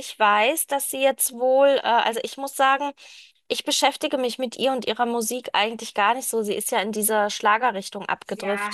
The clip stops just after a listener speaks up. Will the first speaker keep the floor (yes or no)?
no